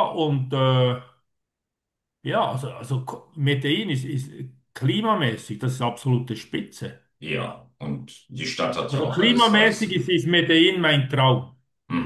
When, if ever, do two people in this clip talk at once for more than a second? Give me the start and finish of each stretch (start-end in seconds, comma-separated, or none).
8.9-10.2